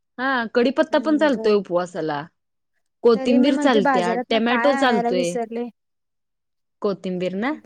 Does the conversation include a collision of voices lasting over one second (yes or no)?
yes